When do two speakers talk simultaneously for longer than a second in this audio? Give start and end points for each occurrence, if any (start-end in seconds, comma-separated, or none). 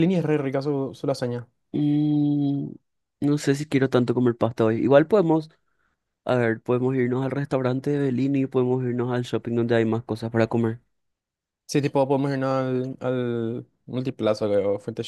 none